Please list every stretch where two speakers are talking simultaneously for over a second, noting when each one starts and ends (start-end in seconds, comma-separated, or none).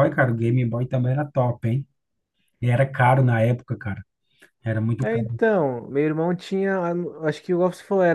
none